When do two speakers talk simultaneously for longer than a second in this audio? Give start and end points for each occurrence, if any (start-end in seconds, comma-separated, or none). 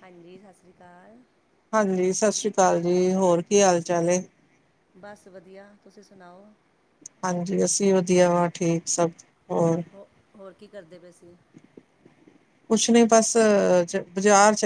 none